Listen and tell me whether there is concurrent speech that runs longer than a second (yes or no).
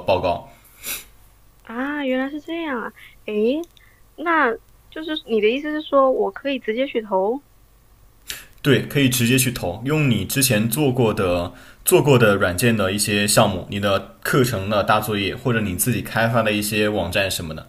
no